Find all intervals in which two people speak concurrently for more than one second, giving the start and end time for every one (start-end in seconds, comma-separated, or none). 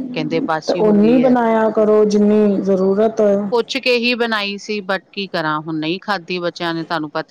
none